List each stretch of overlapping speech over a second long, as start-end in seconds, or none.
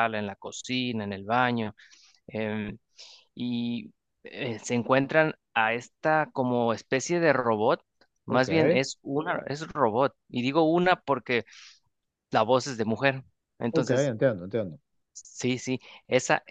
none